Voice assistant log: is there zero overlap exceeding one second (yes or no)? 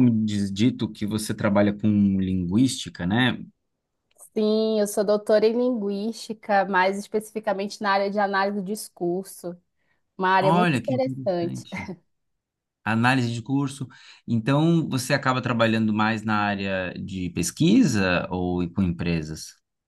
no